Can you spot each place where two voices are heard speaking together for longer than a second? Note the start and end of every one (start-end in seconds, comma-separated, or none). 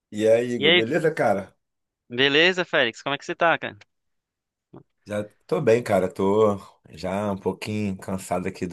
none